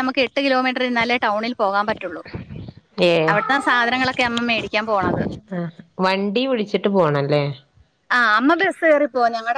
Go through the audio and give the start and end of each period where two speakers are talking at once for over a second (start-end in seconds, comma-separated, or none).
none